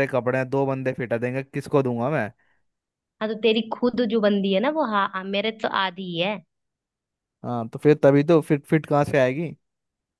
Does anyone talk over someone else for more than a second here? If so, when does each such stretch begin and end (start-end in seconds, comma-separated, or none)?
none